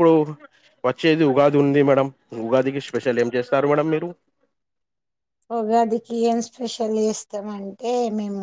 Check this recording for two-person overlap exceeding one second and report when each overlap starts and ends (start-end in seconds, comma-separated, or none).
none